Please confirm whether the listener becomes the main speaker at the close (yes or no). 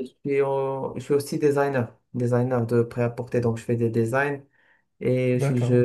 no